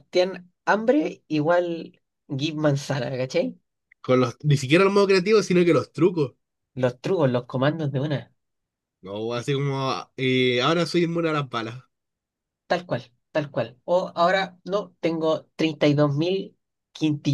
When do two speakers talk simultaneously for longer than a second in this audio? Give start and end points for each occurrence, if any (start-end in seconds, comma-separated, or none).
none